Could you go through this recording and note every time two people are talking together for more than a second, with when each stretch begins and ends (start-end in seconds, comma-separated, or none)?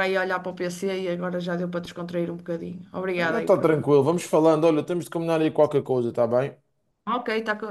none